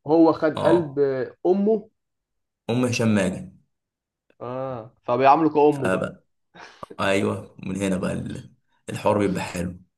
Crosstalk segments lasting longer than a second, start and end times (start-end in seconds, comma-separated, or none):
none